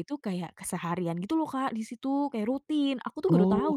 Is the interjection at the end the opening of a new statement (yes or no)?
yes